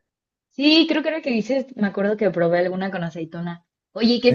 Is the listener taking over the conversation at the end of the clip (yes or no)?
no